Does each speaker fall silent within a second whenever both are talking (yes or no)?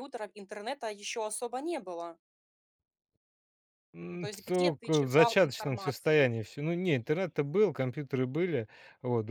no